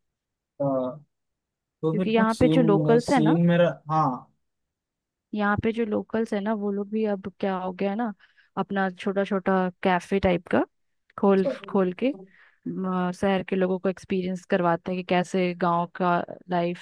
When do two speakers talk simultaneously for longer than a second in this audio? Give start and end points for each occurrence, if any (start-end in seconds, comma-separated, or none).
1.9-3.4